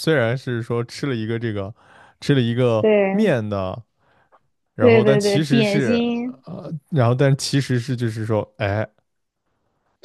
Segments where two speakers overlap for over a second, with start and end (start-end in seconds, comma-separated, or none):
4.8-6.0